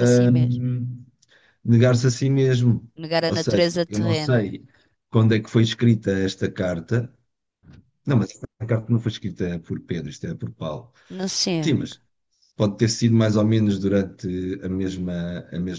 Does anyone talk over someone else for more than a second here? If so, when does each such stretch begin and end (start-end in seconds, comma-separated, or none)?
3.0-4.5